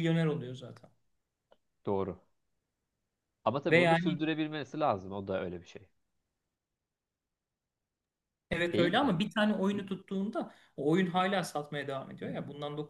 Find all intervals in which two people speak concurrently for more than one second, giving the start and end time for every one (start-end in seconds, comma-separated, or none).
none